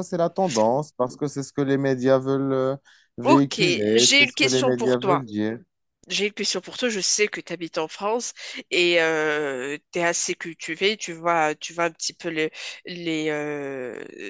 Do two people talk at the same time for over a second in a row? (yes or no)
yes